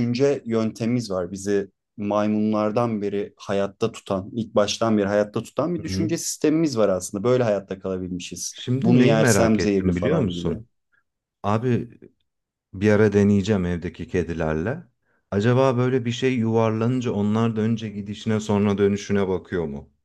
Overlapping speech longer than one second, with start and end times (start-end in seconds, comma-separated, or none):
8.5-10.6